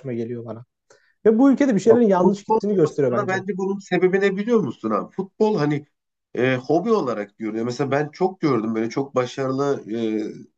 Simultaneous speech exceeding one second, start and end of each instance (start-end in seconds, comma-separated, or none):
1.9-3.4